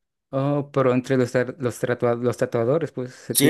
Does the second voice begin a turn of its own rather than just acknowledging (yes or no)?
yes